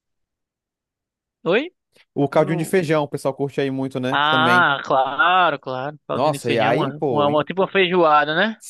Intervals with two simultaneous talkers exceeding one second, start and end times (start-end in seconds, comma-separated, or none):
6.1-7.4